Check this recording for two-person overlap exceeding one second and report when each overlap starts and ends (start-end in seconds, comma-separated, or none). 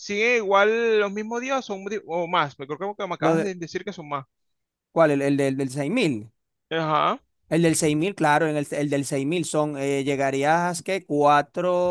none